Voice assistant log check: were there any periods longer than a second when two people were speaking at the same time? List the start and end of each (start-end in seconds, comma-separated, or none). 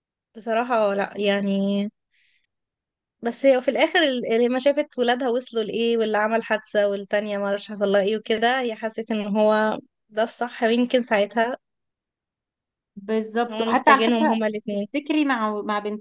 13.5-14.9